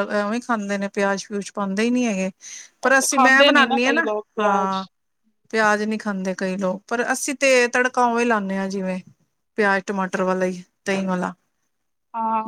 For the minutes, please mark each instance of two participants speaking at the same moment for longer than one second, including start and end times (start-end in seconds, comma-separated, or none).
2.9-4.8